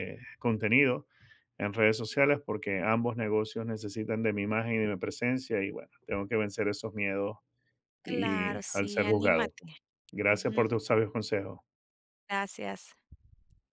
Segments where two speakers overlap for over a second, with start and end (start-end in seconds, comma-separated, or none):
8.1-9.5